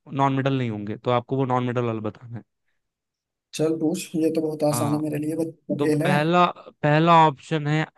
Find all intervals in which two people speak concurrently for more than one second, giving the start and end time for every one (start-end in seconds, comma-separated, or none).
none